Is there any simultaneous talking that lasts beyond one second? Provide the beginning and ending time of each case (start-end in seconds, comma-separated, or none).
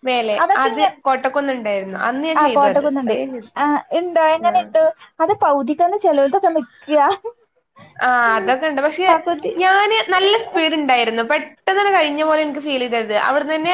none